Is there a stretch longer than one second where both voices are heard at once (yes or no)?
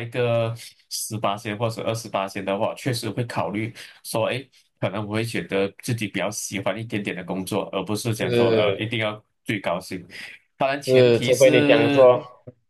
yes